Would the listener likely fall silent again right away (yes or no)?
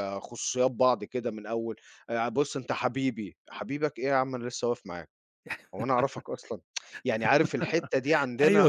no